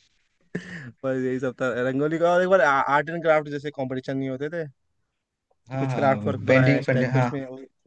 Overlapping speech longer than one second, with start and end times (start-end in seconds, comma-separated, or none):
5.7-7.3